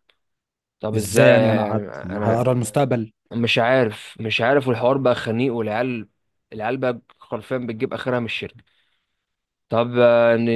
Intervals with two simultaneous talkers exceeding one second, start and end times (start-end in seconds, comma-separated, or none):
0.9-2.5